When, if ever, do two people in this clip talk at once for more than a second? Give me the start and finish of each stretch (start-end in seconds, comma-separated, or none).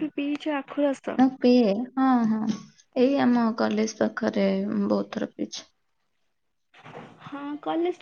none